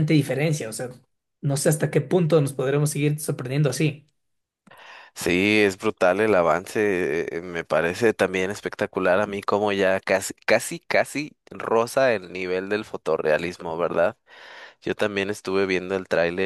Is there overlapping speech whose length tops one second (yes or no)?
no